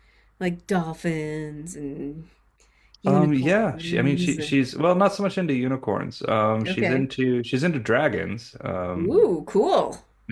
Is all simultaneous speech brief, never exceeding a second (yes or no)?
no